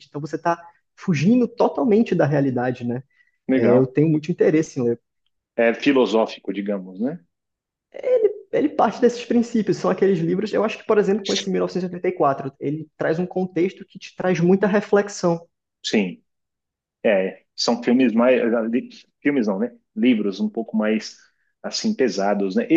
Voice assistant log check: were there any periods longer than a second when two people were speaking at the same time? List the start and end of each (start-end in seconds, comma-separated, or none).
none